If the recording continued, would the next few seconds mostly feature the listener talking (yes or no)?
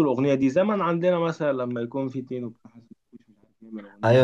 yes